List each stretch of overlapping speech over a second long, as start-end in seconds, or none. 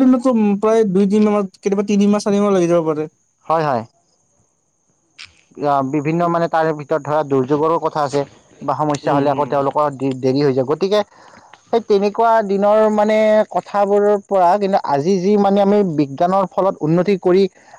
none